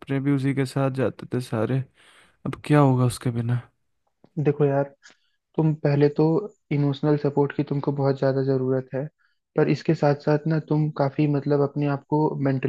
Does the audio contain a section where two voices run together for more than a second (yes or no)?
no